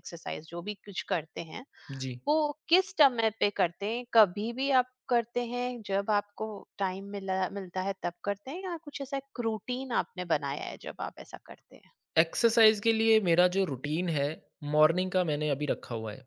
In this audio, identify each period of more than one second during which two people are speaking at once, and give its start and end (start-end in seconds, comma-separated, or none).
none